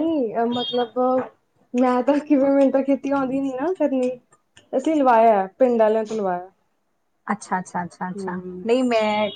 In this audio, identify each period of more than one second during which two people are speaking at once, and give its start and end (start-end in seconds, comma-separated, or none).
none